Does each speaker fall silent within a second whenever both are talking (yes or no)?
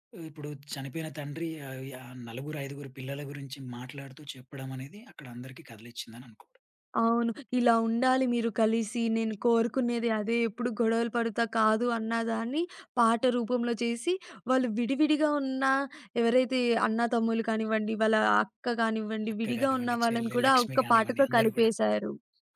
no